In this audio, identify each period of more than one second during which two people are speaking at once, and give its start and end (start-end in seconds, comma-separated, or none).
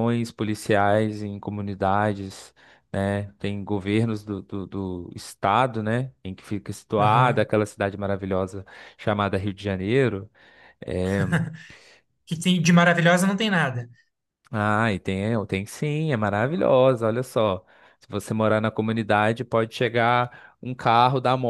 none